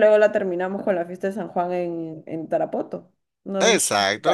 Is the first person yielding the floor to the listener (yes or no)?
yes